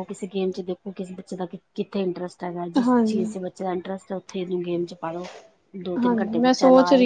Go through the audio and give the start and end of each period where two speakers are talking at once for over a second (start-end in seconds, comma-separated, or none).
none